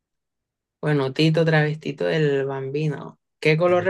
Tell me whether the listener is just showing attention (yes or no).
yes